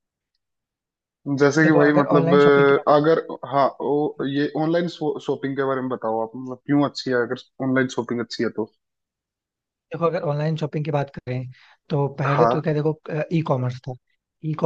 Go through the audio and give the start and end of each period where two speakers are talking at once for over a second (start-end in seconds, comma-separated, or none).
1.6-3.1